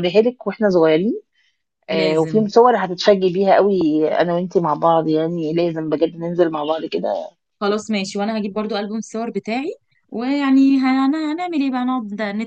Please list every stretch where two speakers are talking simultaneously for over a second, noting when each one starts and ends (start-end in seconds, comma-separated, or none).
none